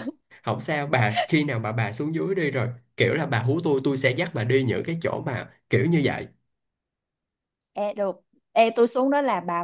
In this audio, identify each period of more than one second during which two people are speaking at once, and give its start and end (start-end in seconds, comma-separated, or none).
none